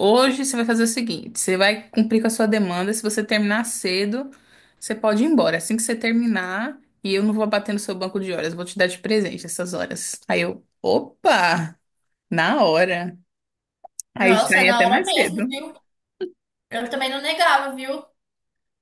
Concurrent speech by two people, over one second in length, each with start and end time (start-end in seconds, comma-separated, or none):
14.2-15.4